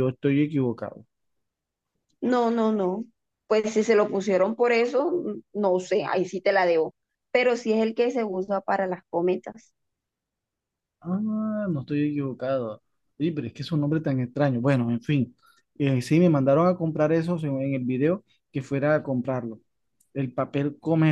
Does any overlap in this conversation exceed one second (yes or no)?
no